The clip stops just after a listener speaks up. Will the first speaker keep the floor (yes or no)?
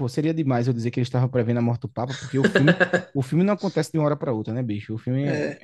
yes